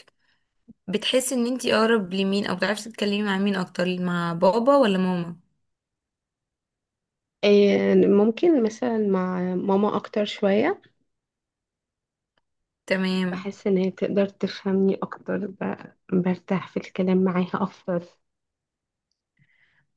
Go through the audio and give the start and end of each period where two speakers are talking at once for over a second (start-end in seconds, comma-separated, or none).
none